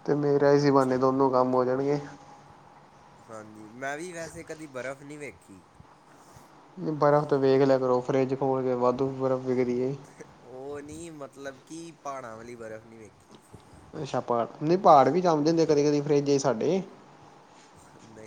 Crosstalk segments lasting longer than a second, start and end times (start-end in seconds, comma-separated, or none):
none